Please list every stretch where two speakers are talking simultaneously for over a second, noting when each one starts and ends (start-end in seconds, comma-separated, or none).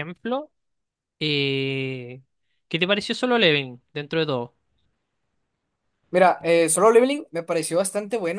none